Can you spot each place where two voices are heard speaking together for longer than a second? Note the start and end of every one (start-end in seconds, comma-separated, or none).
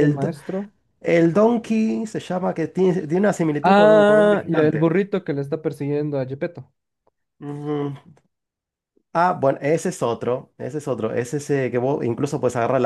3.6-4.8